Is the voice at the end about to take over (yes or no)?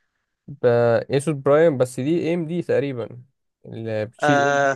yes